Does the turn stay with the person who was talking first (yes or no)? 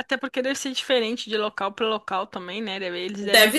yes